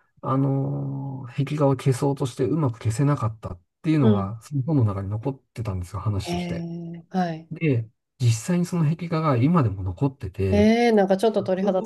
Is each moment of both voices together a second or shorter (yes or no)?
yes